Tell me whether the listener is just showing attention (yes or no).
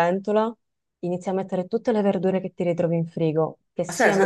no